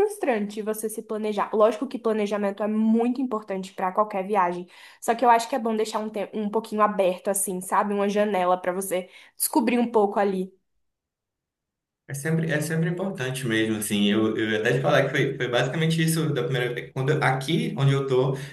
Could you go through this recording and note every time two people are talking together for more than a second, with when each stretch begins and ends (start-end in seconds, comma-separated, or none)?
none